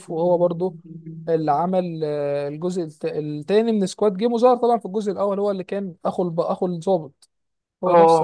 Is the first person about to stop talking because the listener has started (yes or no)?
yes